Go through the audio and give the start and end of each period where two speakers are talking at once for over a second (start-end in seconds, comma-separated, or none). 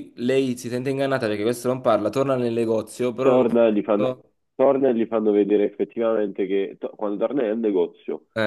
none